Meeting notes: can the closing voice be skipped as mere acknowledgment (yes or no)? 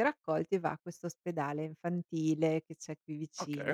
no